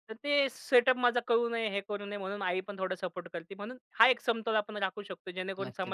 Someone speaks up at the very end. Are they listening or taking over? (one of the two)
taking over